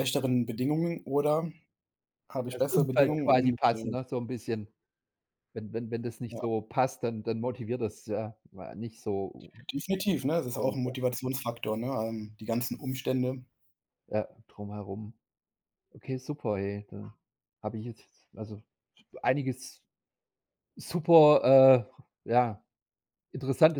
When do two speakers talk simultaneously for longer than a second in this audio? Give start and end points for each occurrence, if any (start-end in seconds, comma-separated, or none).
2.5-3.9